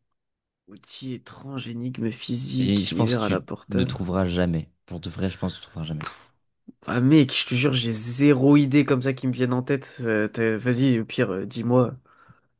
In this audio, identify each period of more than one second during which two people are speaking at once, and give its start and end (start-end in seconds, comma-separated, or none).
2.6-4.0